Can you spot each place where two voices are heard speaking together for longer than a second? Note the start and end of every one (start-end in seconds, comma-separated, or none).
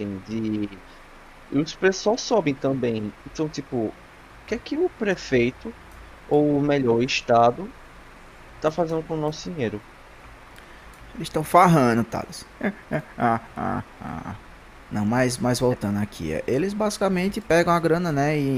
none